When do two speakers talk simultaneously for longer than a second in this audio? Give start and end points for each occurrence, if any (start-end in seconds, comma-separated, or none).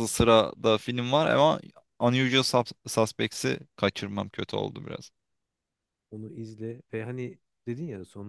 none